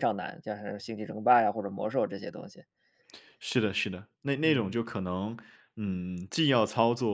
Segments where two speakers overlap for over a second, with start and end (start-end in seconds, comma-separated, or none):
none